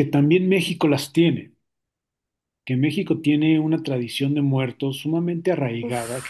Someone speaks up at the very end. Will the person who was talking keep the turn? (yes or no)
yes